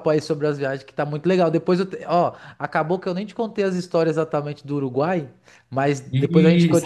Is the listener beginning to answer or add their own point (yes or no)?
no